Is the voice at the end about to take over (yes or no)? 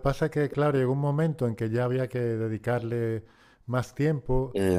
no